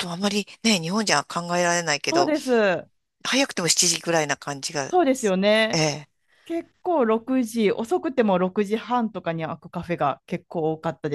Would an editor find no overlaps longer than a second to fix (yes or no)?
yes